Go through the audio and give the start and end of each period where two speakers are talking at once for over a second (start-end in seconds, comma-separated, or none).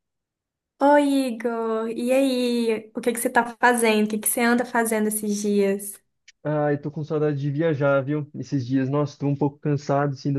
none